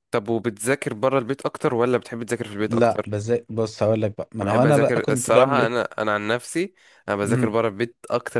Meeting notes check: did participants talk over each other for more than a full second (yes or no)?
yes